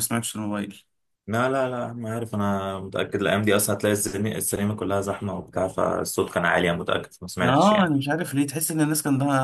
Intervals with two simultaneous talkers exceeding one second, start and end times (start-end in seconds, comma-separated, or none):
none